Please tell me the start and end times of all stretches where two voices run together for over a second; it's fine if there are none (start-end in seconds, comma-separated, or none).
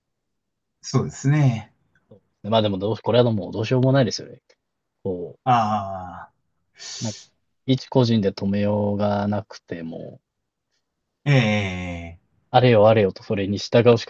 none